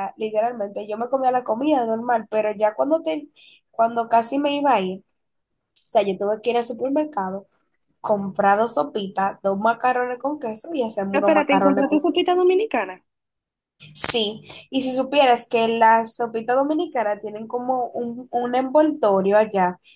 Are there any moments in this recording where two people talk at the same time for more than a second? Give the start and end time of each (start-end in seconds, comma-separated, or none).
11.1-12.5